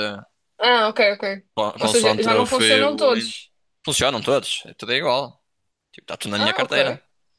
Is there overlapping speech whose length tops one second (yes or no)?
yes